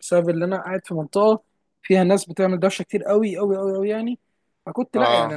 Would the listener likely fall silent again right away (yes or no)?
yes